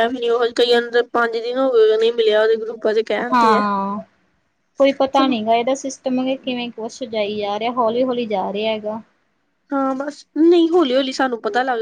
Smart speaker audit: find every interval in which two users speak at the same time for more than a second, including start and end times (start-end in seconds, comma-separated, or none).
none